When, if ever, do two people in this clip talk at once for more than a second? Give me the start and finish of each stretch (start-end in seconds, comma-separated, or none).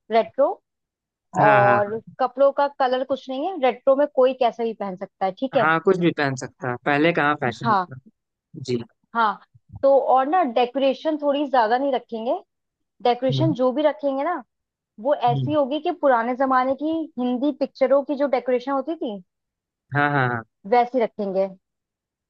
none